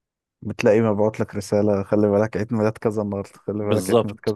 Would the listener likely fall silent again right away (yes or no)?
no